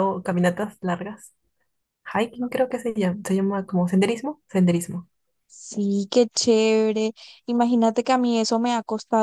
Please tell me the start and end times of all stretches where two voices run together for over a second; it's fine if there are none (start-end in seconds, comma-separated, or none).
none